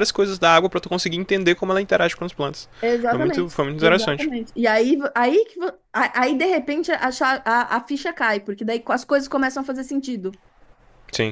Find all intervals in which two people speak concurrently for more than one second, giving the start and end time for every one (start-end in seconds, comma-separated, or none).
3.1-4.3